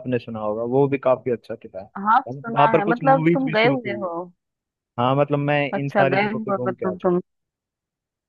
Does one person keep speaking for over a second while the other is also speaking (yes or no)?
yes